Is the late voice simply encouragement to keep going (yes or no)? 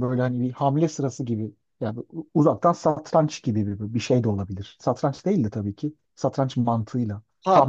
no